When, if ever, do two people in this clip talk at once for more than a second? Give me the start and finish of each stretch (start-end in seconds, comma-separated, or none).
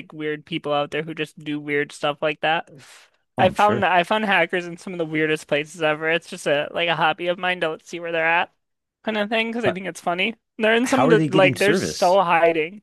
10.8-12.2